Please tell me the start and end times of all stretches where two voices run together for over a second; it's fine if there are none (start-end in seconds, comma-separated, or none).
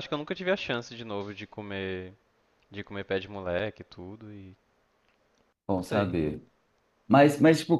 none